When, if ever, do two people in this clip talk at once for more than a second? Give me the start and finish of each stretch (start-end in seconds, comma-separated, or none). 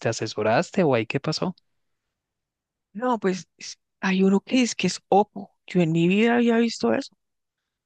none